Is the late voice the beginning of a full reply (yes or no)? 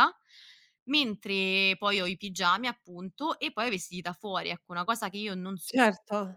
no